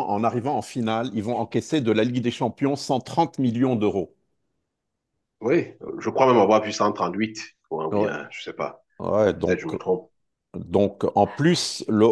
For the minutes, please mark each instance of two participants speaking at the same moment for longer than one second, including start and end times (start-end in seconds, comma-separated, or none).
none